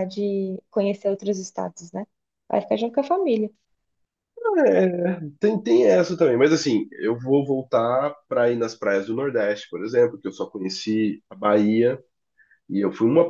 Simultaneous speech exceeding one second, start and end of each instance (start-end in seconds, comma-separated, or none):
none